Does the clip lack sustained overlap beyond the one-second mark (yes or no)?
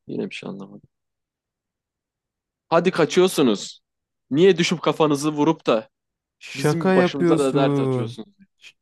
no